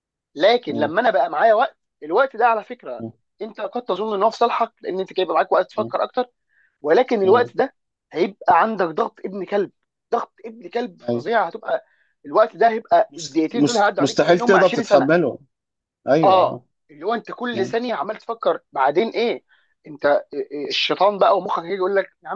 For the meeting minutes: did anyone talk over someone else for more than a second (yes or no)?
yes